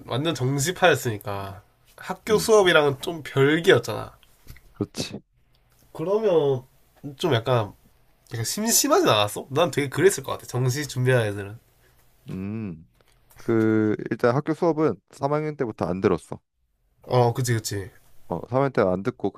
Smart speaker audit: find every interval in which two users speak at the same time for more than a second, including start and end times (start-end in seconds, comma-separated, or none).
none